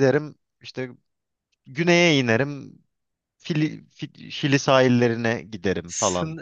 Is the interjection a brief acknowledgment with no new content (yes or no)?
no